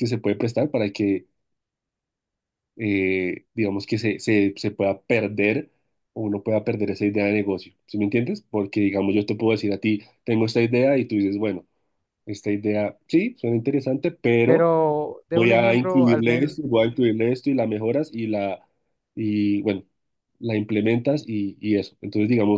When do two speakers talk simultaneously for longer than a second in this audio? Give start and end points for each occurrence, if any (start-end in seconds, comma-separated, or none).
15.3-16.5